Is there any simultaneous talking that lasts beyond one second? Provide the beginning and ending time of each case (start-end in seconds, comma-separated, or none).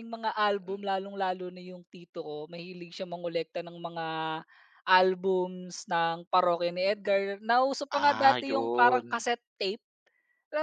7.9-9.2